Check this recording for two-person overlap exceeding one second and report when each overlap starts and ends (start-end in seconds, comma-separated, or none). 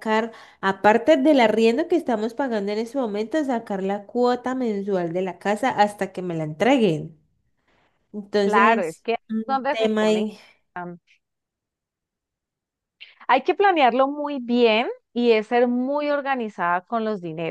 8.4-10.2